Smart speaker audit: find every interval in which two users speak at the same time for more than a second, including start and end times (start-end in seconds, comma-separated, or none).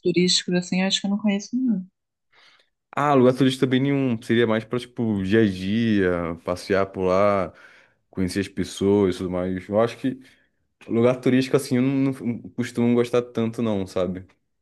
none